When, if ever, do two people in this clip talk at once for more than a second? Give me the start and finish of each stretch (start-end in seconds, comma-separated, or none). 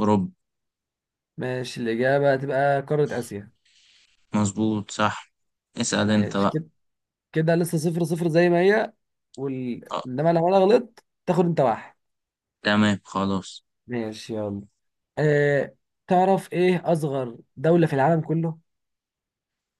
none